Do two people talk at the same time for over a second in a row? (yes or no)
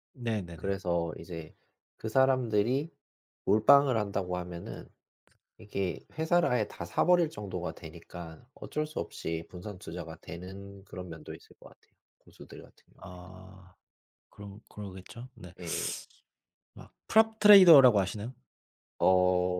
no